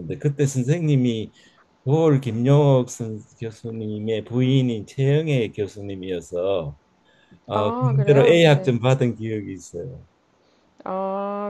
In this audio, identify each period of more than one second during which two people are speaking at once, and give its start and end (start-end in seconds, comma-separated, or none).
7.5-8.7